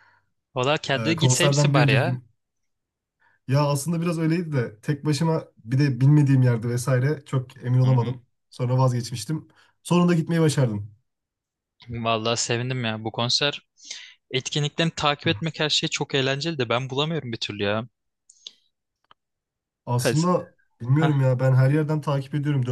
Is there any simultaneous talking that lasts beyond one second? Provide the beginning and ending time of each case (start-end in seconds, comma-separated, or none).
1.0-2.2